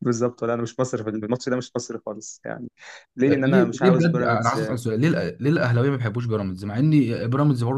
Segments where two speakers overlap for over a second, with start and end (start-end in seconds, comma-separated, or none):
3.3-4.7